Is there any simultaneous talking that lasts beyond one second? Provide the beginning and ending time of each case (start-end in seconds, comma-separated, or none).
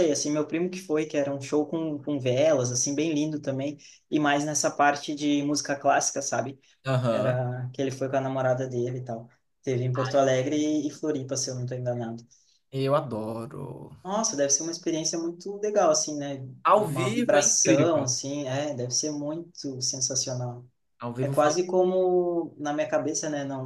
16.6-18.1